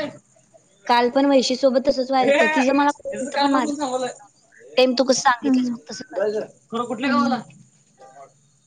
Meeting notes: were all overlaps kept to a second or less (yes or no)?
no